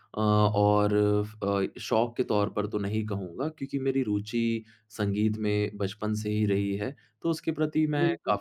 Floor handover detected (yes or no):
no